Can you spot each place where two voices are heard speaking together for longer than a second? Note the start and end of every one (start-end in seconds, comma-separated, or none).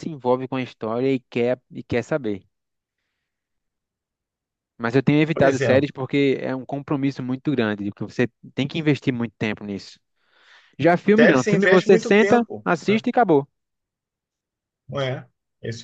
11.2-13.0